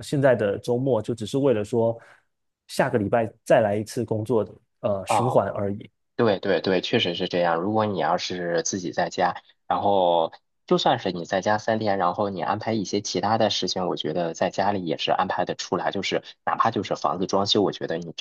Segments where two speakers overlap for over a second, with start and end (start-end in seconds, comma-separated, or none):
none